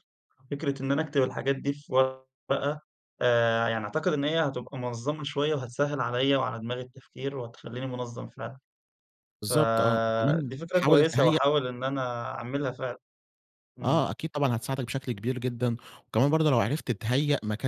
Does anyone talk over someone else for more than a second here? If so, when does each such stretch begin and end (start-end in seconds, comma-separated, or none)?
9.4-11.4